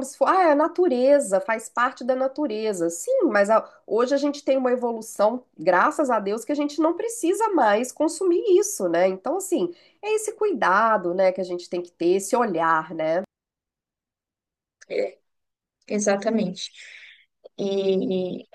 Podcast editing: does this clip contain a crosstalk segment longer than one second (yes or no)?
no